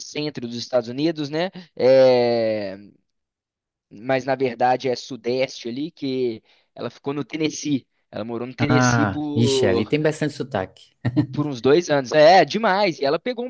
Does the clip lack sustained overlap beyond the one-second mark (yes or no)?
no